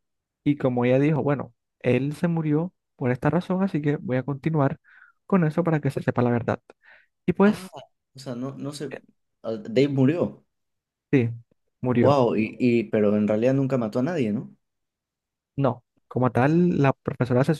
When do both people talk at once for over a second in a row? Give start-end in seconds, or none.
none